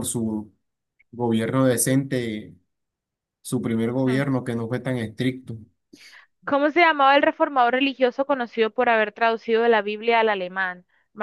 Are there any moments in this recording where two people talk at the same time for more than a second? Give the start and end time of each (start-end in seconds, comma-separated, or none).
none